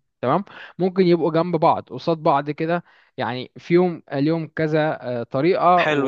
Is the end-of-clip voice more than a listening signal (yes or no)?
yes